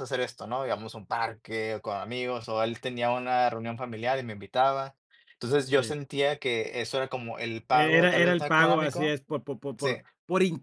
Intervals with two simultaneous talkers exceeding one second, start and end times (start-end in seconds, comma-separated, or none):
7.7-9.1